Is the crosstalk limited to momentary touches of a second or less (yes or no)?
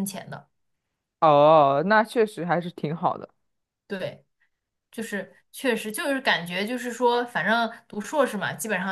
yes